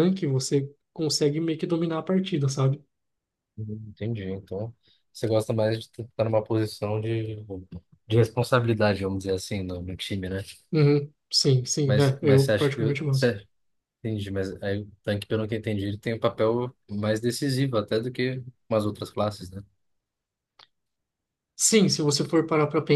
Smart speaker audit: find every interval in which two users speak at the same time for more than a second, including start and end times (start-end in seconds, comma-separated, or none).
11.8-13.4